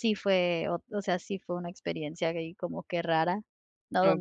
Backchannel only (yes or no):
yes